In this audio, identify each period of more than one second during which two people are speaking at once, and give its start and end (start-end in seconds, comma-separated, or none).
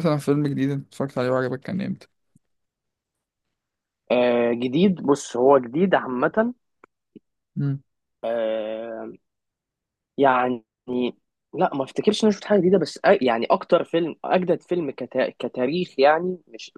none